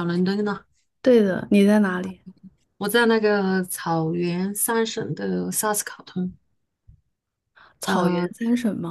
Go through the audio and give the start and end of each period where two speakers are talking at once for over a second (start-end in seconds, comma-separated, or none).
none